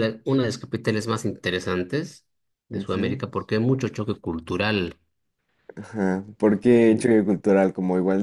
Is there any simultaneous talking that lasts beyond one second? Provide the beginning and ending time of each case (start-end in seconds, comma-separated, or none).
none